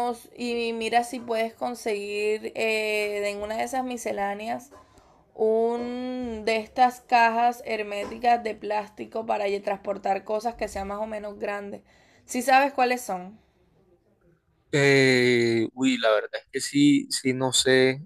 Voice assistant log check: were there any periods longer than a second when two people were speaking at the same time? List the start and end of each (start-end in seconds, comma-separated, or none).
none